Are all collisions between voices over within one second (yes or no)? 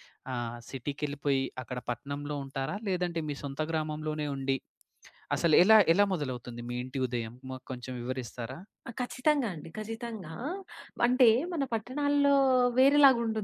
yes